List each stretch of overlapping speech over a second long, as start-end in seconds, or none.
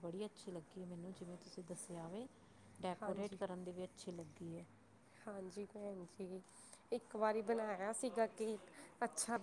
none